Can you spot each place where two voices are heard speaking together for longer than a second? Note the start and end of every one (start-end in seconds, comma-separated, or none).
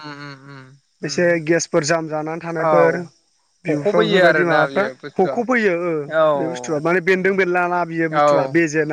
3.7-5.4